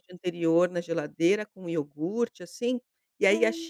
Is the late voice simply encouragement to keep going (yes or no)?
yes